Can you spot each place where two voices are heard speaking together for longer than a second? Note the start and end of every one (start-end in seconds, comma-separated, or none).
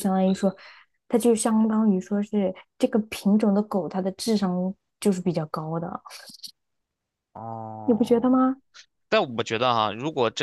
none